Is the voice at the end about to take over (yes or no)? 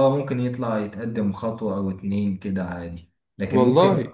no